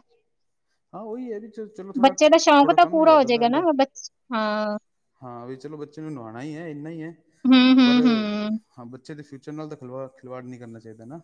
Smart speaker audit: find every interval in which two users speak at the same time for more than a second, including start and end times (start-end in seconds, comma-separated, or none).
2.0-3.6